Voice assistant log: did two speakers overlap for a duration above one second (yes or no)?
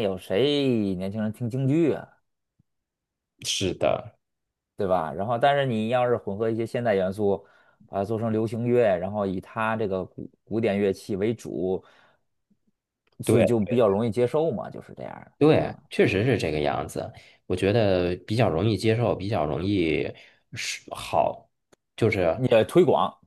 no